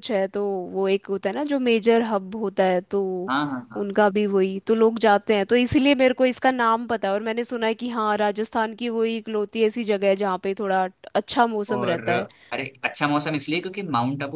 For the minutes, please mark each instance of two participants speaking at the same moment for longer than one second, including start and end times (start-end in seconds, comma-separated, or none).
none